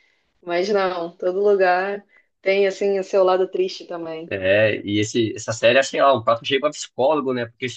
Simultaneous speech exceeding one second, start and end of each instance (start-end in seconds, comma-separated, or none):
none